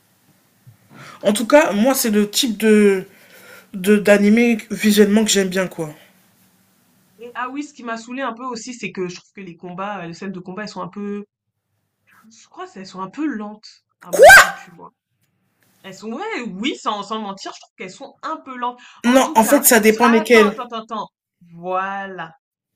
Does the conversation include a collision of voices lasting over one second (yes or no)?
yes